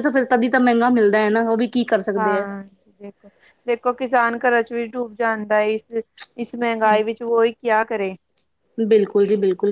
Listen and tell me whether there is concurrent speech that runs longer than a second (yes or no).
no